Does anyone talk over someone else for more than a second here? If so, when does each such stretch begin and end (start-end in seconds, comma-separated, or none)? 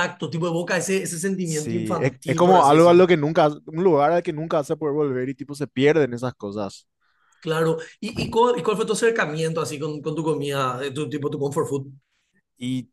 1.4-3.0